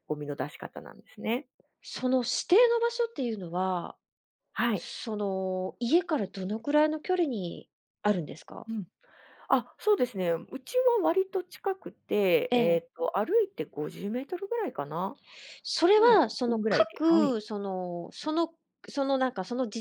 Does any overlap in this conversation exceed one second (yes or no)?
yes